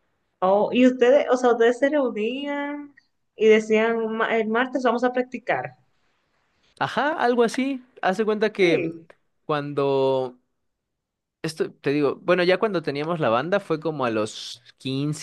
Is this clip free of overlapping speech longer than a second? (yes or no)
yes